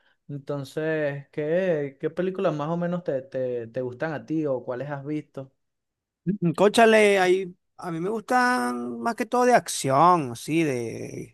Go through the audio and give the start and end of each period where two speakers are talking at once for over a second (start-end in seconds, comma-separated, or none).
none